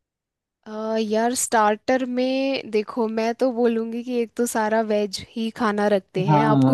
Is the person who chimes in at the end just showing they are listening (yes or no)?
no